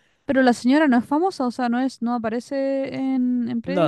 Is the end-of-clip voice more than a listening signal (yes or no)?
yes